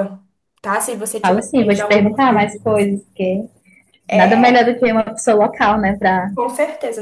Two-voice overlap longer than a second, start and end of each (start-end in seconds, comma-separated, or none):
1.2-2.9